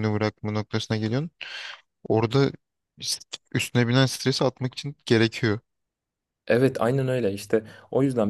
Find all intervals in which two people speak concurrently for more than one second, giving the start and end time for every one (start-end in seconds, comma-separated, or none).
none